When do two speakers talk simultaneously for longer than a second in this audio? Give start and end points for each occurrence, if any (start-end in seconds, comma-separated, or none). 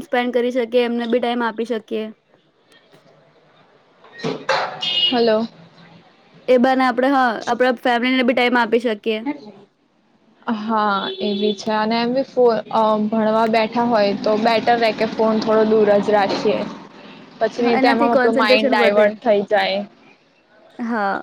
17.8-19.1